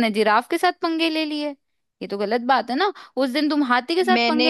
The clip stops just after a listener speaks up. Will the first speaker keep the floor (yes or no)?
yes